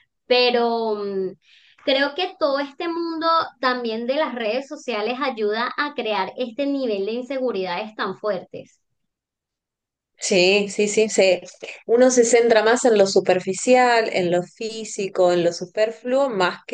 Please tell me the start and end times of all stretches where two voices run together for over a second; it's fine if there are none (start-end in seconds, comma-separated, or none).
none